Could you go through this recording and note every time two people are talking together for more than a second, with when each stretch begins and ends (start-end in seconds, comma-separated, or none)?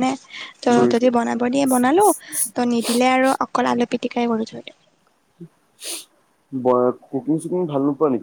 none